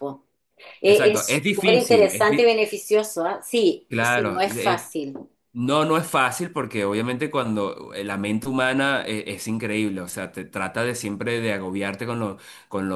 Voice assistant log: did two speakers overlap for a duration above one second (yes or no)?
yes